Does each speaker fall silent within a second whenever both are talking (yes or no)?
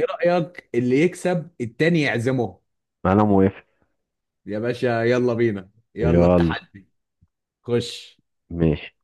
yes